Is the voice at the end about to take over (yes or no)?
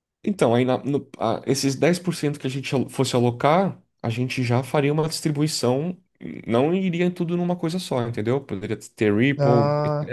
no